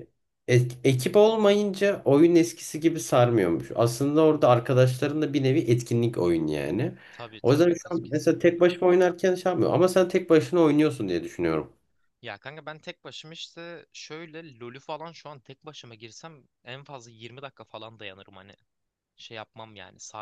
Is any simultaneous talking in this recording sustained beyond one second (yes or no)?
yes